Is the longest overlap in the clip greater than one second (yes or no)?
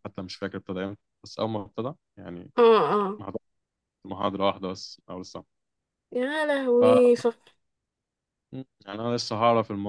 no